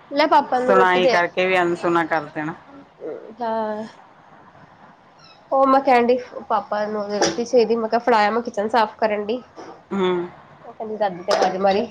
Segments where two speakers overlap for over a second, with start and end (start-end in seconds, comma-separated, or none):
none